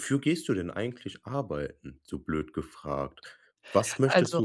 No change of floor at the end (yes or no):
yes